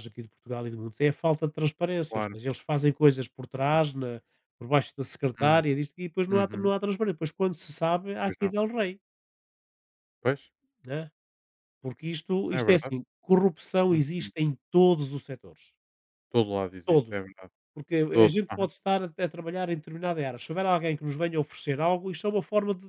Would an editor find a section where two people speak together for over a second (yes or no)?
no